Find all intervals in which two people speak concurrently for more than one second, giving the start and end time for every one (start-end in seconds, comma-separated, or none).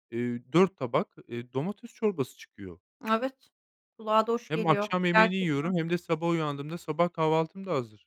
4.5-5.7